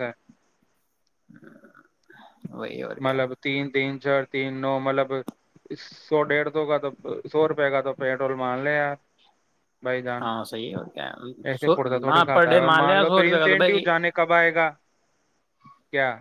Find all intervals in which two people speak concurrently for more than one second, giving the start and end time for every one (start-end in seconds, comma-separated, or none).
11.5-13.8